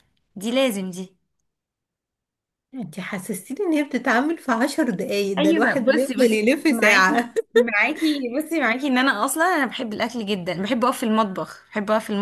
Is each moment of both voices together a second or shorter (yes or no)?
no